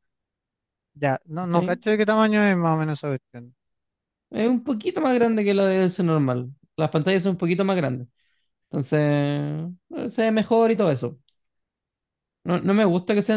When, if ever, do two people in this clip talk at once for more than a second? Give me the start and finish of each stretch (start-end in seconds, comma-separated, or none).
none